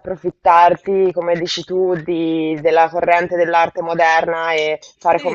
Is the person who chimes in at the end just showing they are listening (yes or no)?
no